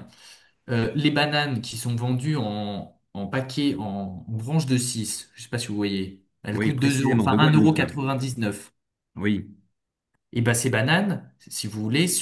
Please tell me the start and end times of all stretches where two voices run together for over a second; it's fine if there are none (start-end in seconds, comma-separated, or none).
6.5-8.0